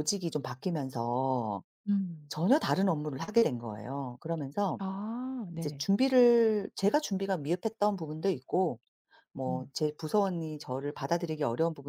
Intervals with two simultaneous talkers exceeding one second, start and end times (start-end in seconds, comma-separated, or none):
none